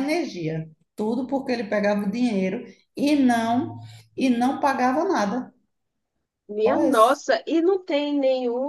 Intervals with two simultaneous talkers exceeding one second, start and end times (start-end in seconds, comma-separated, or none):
none